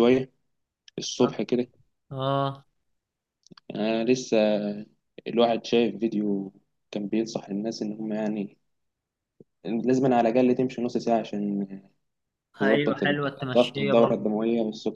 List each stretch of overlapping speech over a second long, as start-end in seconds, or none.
12.6-14.3